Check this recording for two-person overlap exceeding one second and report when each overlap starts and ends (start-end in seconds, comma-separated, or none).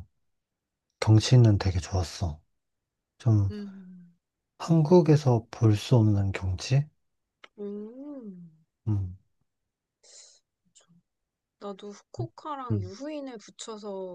none